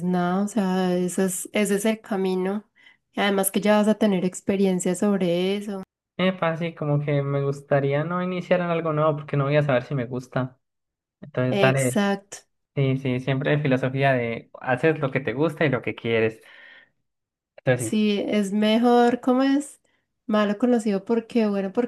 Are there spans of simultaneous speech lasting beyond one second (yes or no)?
no